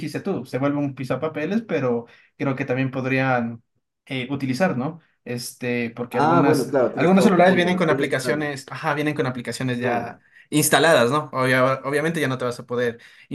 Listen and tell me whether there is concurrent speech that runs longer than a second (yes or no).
yes